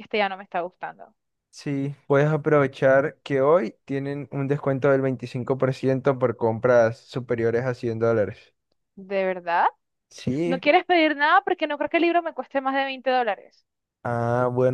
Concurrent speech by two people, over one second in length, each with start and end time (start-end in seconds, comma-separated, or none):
none